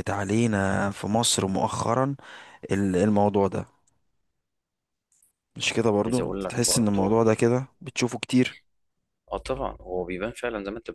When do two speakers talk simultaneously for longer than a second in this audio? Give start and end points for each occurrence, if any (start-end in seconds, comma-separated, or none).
6.0-7.2